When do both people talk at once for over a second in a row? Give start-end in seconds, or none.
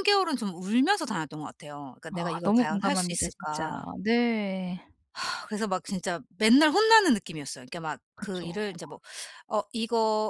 2.1-3.9